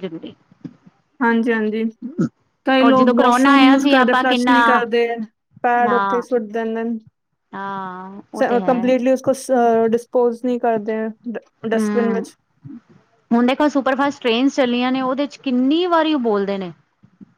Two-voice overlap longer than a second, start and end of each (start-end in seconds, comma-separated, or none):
2.8-4.5